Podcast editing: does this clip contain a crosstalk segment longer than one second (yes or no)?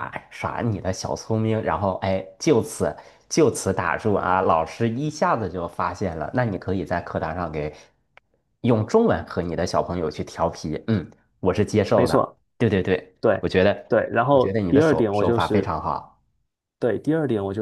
yes